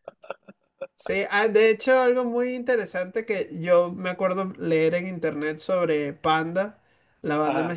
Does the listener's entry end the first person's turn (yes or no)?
no